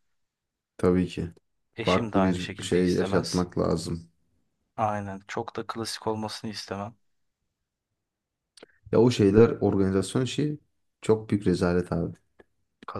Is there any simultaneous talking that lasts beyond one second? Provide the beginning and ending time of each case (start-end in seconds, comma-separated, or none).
1.8-3.5